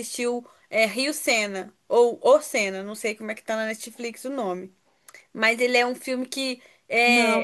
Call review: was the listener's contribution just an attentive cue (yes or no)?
yes